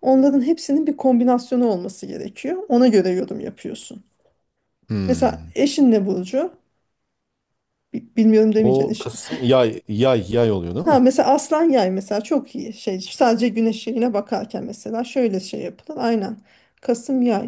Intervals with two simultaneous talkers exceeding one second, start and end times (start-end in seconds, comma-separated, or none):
none